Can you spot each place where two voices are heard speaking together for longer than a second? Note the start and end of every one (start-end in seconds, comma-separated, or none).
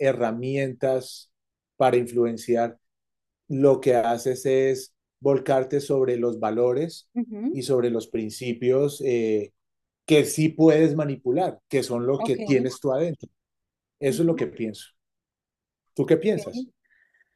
none